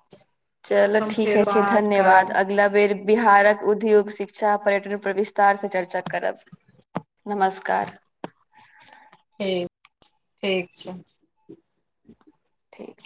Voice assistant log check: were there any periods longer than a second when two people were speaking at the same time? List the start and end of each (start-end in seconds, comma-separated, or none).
0.7-2.4